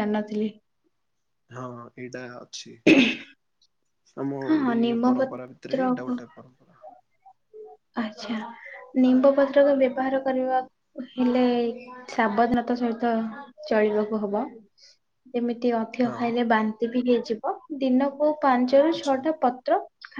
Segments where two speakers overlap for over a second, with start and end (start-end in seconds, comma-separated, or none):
4.5-6.1